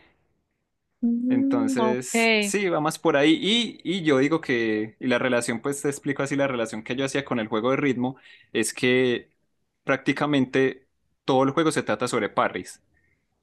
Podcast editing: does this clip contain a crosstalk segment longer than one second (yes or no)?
yes